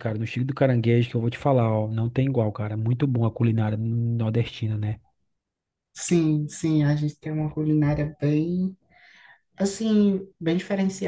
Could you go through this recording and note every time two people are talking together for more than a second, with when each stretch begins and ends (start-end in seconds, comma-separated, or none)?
none